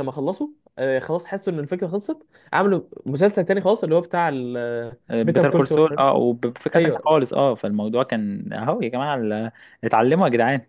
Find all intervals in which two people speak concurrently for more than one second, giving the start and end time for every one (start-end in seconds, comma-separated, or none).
none